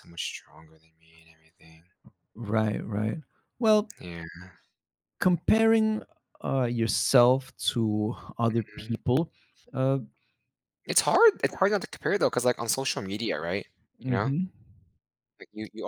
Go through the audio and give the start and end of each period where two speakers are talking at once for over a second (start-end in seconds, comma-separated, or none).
none